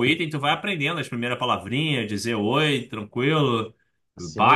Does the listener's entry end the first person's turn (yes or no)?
yes